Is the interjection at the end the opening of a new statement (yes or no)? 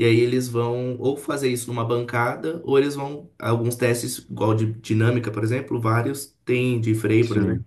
no